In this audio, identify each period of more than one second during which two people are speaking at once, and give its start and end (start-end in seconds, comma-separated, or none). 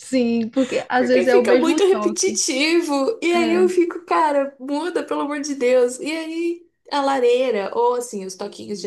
0.9-2.4